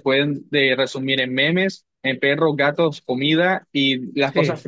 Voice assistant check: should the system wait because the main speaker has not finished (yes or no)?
yes